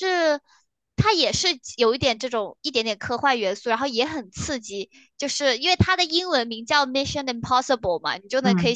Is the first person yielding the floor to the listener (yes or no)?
no